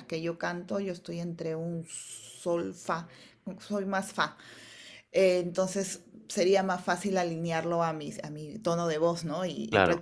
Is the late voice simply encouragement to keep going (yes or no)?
yes